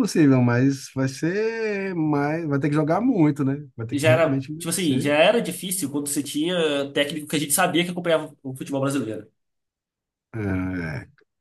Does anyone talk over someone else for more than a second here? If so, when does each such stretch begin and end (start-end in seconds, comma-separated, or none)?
3.9-5.2